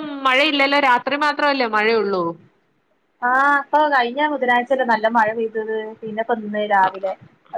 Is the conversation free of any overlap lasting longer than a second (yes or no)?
yes